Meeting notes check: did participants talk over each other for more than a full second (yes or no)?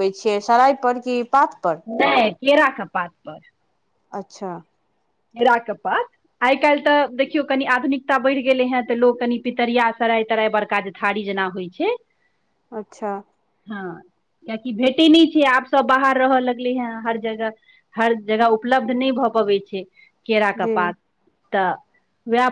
no